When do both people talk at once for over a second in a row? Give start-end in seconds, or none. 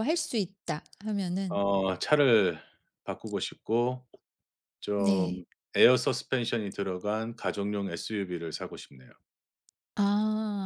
none